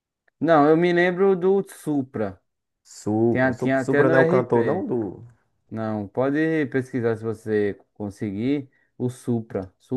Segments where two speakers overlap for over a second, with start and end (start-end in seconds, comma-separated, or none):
3.3-4.9